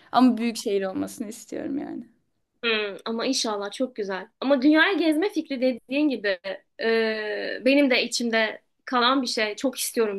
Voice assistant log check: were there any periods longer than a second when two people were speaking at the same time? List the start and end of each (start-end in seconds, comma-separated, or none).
none